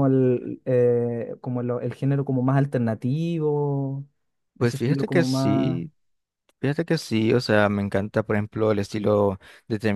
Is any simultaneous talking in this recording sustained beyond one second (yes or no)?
yes